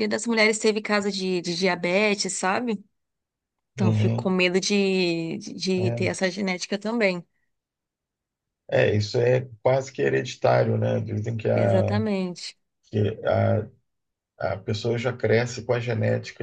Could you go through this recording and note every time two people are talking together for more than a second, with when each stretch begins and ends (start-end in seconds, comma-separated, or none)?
none